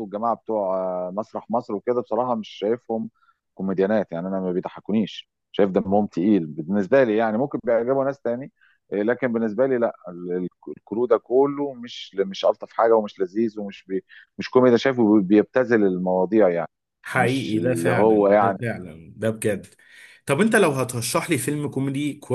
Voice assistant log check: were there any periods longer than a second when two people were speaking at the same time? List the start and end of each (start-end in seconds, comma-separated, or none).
17.1-18.6